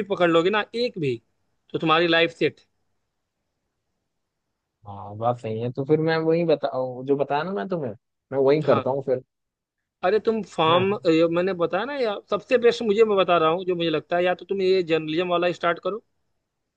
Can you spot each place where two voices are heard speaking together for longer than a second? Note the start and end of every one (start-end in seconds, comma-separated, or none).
none